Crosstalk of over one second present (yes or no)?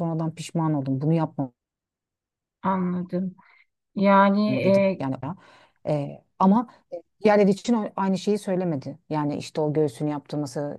no